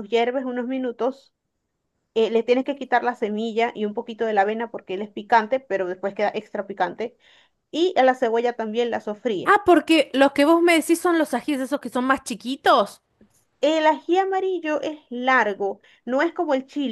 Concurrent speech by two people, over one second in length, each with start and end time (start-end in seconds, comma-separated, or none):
none